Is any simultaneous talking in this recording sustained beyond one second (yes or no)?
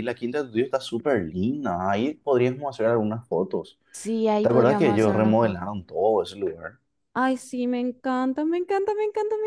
yes